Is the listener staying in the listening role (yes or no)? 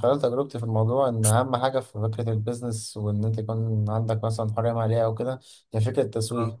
yes